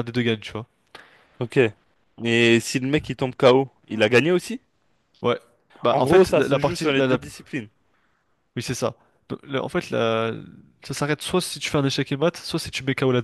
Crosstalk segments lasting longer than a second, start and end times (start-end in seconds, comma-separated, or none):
5.9-7.2